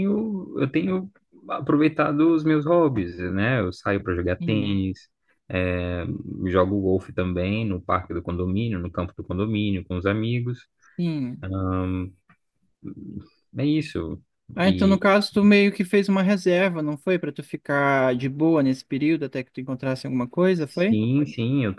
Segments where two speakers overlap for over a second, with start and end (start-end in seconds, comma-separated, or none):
none